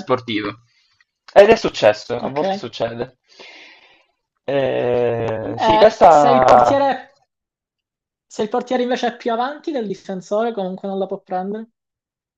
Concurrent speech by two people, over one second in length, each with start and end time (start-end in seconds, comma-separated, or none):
5.5-6.8